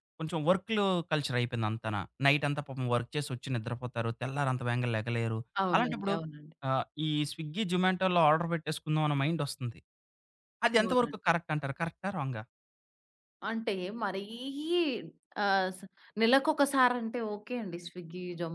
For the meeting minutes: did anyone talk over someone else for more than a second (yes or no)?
no